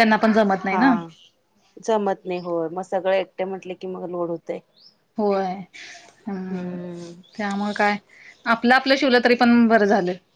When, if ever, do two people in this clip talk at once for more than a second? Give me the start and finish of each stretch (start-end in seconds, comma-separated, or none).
none